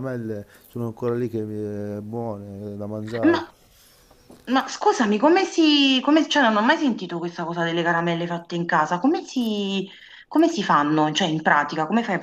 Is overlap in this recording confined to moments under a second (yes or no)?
yes